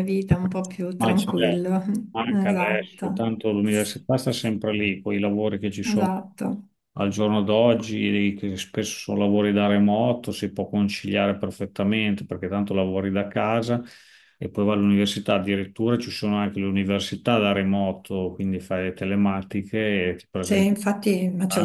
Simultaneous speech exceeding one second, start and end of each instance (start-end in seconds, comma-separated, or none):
2.3-4.6